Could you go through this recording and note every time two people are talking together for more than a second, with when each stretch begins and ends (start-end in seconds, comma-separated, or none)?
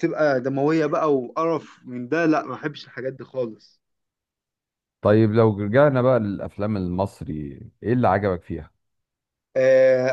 none